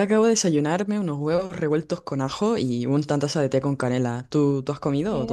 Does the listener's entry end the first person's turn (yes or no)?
yes